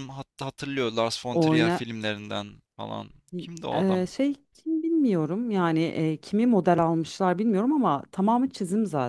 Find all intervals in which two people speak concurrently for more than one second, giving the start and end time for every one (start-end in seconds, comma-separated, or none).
none